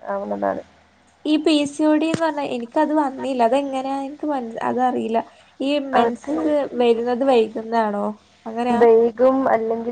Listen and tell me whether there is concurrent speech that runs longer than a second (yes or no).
no